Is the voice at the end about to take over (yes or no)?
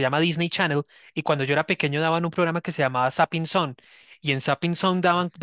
no